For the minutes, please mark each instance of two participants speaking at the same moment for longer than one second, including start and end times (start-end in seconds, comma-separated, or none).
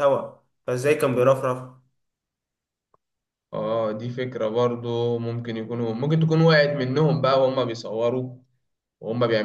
none